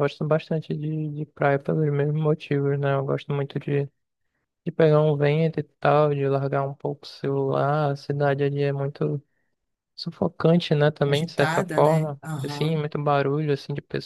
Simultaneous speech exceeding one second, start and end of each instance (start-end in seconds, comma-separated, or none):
11.1-12.7